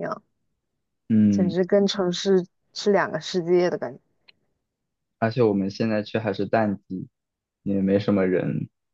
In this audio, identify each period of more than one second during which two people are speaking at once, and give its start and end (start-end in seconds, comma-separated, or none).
none